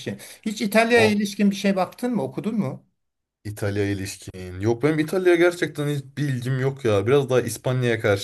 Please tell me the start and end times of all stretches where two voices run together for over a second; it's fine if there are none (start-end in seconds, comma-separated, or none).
none